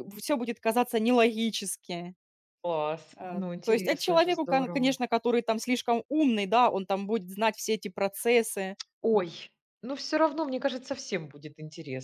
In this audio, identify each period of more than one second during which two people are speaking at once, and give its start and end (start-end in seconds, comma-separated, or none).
3.2-5.0